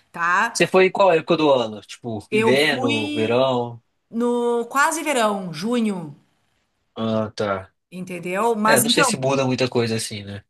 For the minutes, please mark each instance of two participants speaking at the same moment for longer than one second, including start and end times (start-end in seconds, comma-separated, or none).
2.3-3.5